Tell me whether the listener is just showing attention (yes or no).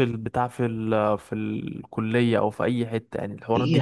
no